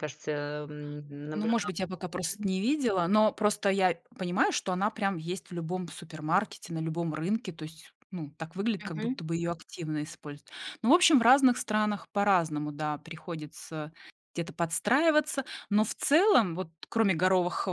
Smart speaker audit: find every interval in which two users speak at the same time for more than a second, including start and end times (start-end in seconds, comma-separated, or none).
none